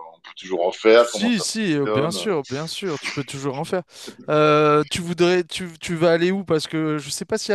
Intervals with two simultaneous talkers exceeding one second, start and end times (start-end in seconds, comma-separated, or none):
0.9-2.1